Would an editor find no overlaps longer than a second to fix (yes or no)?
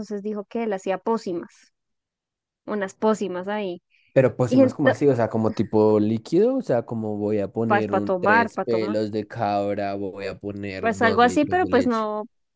no